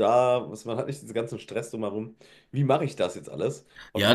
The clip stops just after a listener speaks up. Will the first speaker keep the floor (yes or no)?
no